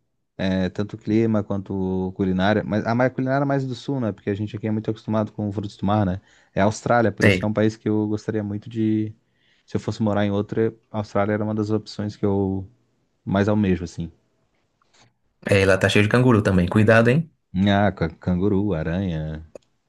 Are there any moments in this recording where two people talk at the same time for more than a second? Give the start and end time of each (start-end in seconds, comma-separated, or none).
none